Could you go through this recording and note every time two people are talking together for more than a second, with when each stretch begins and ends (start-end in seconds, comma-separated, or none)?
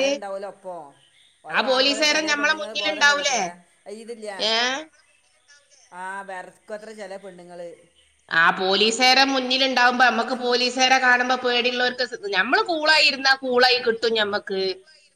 1.5-3.4